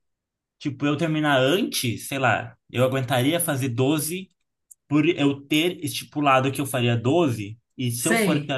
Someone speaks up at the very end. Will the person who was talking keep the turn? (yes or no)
yes